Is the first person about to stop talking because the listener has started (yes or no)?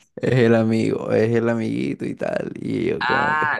yes